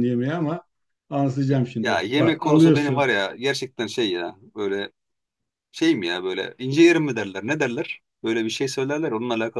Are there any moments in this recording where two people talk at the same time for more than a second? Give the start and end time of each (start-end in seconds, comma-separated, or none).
1.8-3.1